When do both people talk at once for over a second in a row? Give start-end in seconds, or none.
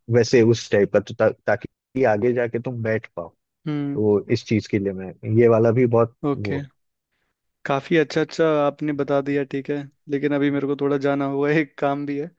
none